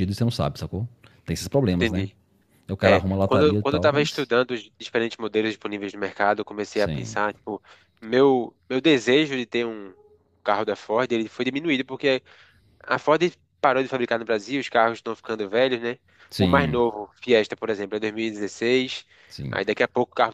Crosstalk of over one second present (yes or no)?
yes